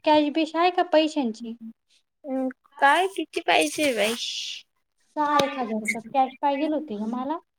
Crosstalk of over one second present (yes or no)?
no